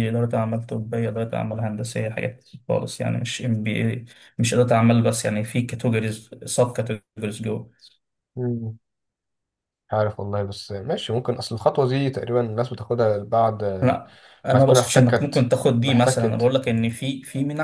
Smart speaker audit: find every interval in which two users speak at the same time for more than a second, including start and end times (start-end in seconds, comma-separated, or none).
14.5-16.5